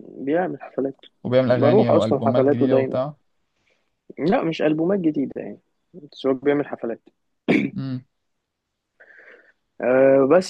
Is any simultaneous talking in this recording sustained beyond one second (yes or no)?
yes